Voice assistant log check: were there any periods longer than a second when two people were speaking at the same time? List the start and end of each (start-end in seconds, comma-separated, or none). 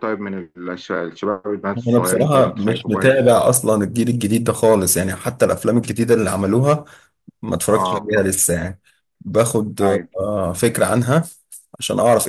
1.9-3.1